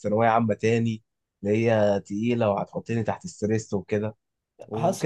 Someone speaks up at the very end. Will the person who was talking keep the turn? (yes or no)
yes